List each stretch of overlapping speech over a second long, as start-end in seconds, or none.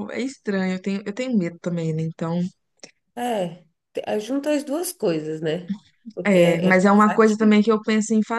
6.2-7.7